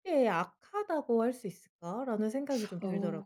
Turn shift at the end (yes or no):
yes